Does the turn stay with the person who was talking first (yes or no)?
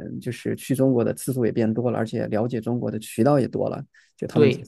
yes